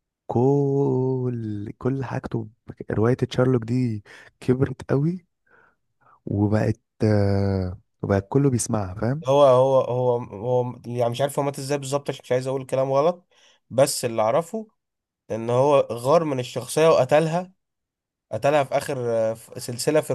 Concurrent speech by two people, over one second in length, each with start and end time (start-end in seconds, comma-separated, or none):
none